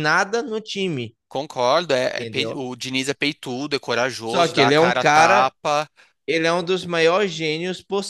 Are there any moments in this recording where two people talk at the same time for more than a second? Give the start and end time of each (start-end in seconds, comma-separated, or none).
4.2-5.5